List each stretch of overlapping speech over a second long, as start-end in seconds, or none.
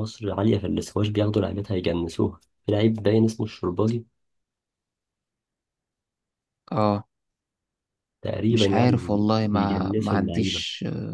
8.5-10.6